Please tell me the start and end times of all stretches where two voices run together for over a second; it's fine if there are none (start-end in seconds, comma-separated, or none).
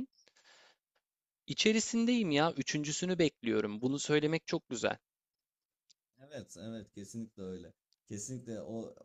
none